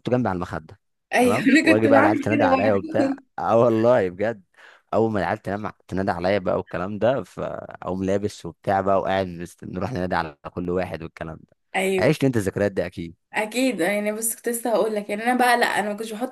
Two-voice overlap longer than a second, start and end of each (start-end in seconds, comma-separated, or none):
1.2-3.0